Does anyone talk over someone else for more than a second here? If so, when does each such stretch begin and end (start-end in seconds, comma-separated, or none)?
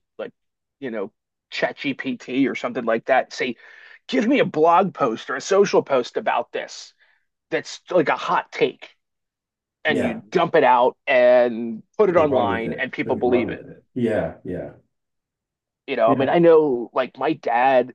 12.1-13.6